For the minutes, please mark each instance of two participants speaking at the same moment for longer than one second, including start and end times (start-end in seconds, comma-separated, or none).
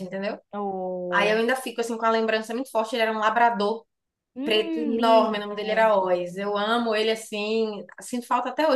4.4-5.9